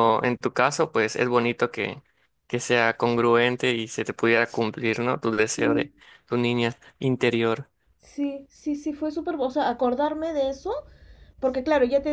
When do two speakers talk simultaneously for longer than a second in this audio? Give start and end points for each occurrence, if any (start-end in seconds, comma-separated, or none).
none